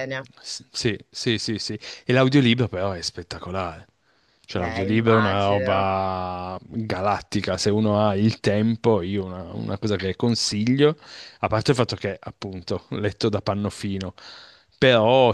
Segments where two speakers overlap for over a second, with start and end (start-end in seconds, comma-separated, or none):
4.5-5.9